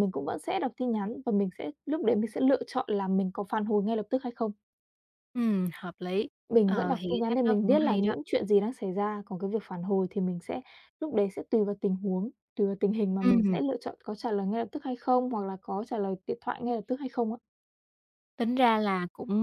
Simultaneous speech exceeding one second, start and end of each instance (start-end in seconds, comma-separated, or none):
6.6-8.1